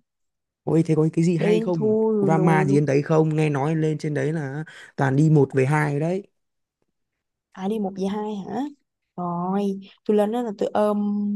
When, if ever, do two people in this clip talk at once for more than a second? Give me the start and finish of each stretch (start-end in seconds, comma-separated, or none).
1.4-2.9